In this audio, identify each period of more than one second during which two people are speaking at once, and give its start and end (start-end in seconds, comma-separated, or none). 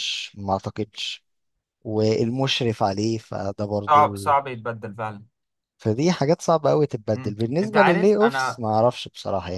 7.2-8.6